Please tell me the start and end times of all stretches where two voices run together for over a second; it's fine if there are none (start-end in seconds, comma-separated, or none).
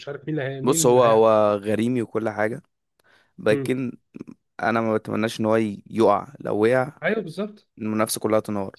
none